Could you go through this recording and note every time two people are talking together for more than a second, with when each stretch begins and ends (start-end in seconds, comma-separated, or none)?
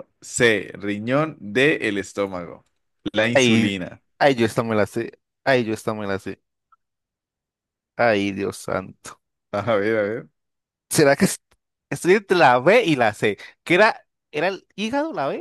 none